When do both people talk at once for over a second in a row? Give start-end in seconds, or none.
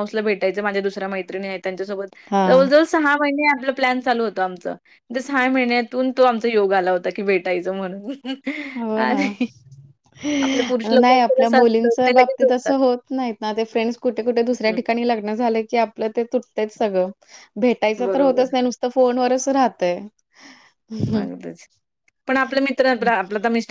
11.0-12.7